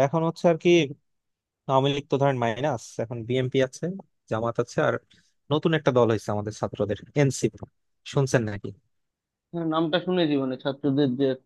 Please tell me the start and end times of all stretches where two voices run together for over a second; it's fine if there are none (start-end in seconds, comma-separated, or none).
none